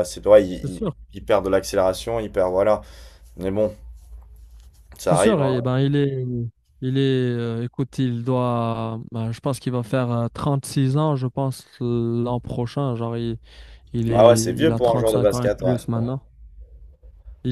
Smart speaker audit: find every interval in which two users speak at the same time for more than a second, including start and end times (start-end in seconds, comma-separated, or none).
14.1-15.8